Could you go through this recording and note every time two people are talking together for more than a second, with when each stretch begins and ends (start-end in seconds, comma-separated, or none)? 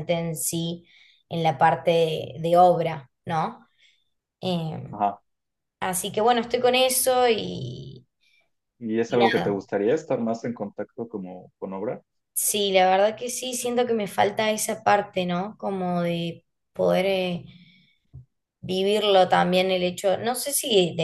none